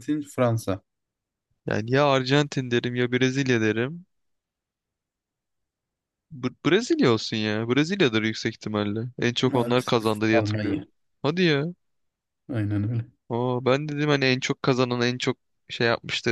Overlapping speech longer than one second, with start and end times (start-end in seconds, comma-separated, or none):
9.5-10.8